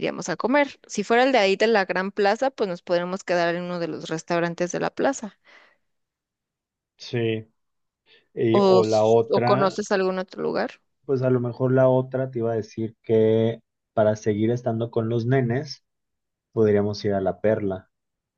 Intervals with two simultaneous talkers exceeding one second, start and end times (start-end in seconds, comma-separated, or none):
8.5-9.8